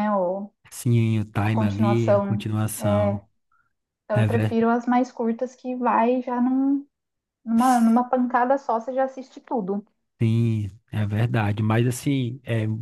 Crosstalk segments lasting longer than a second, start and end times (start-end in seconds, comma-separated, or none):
1.4-3.2